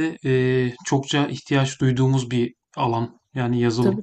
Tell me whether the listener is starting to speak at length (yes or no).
yes